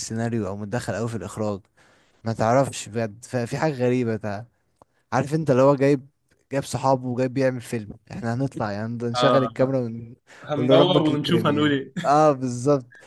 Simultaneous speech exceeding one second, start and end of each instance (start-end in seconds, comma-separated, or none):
10.4-11.9